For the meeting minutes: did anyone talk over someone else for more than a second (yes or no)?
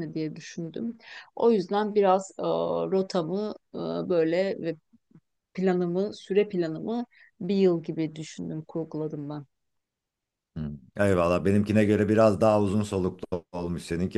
no